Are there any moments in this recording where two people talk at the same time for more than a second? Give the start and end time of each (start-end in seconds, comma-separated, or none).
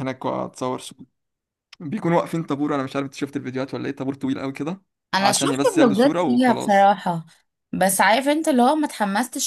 5.2-6.9